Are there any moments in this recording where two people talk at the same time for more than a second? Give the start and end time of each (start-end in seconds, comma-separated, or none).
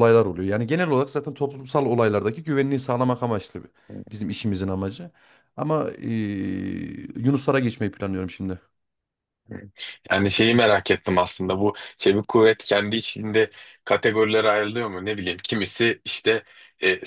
none